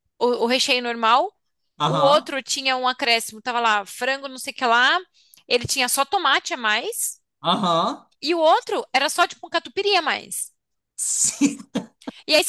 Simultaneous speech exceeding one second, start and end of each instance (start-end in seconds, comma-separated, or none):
none